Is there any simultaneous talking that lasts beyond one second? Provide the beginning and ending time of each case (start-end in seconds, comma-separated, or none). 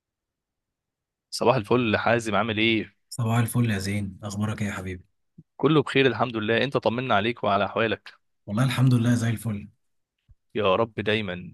none